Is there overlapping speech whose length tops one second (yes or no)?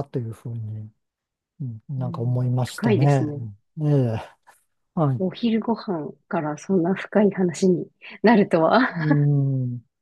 yes